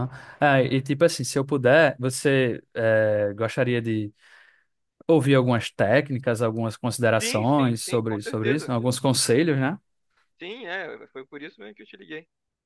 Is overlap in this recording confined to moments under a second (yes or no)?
no